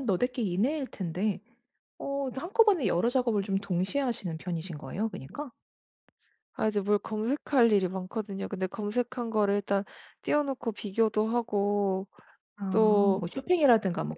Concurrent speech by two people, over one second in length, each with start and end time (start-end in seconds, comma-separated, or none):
none